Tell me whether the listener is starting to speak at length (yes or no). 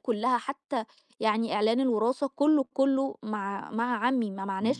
yes